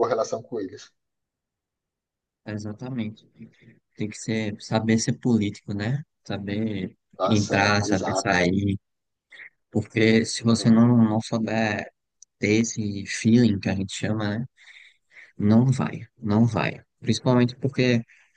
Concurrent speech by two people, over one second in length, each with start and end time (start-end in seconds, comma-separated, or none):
7.2-8.4